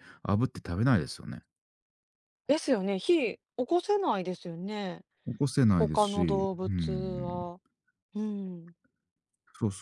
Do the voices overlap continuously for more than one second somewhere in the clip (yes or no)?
yes